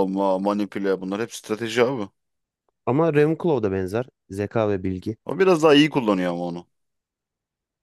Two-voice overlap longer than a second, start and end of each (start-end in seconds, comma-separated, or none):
none